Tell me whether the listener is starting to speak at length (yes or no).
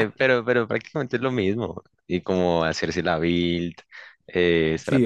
yes